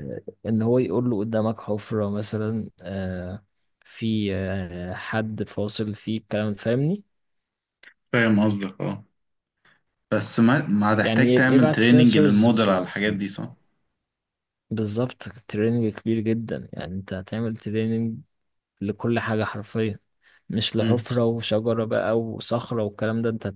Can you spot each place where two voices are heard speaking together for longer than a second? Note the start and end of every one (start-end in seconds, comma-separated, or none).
11.0-12.8